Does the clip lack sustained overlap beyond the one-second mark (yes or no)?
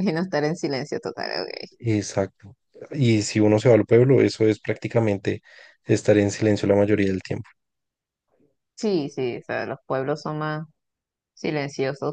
yes